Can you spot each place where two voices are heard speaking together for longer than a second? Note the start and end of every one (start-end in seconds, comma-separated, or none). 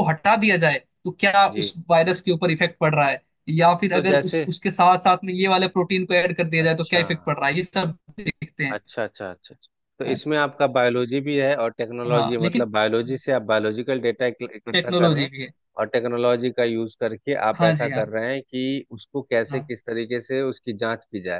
none